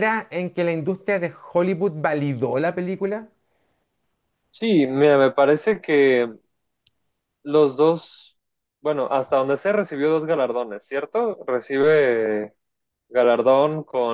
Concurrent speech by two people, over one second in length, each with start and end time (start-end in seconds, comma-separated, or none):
none